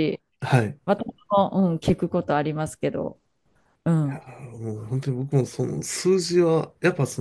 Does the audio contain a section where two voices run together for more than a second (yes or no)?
no